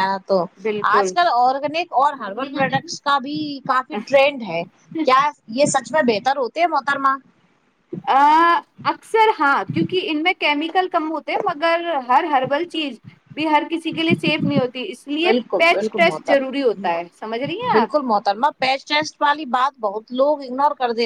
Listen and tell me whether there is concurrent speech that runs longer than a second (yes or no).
yes